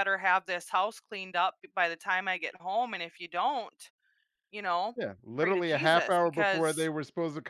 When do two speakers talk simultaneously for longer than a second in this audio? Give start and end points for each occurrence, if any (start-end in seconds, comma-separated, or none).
5.4-6.9